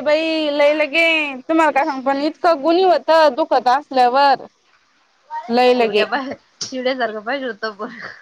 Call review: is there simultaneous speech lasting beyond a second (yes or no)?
no